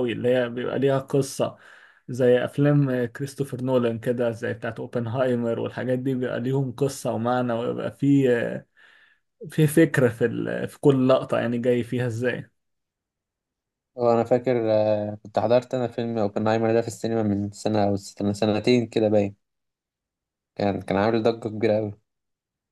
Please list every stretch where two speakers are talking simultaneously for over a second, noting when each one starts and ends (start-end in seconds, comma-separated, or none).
none